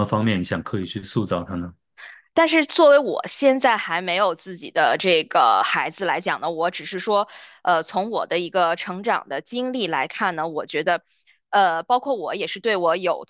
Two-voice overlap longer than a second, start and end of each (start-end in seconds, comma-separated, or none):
none